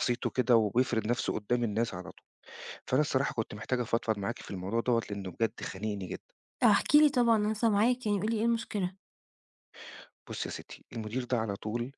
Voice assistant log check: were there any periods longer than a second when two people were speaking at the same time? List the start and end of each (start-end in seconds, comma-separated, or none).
none